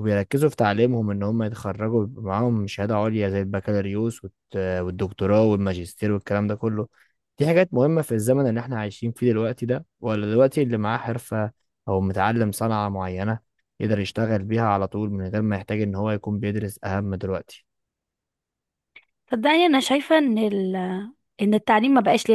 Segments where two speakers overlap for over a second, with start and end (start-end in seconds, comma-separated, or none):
none